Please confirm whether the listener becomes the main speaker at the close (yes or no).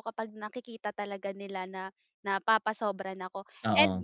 no